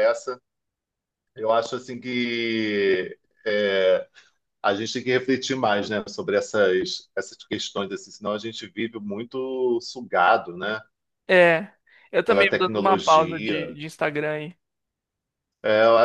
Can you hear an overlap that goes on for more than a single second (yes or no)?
yes